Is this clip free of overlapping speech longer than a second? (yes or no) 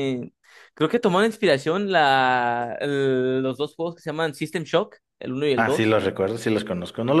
yes